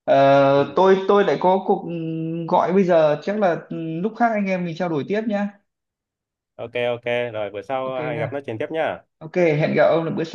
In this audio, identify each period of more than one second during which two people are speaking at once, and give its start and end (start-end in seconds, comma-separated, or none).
none